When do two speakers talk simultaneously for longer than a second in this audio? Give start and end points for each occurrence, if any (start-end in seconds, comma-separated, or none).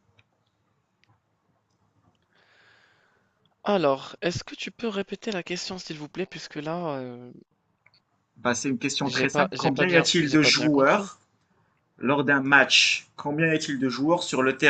9.0-11.1